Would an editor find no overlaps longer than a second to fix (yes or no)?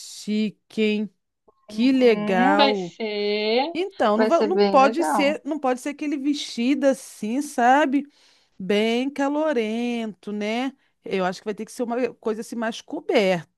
no